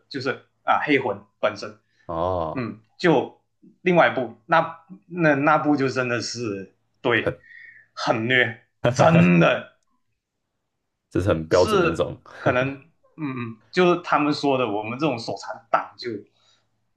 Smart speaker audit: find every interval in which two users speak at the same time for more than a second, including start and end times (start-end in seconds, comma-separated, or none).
none